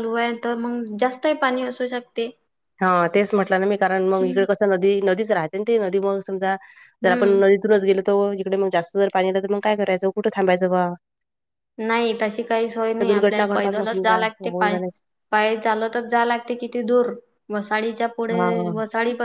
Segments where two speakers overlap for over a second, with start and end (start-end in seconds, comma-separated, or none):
13.0-14.8